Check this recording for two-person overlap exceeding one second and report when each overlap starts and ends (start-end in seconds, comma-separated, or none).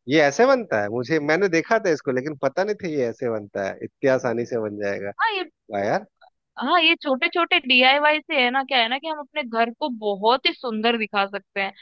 none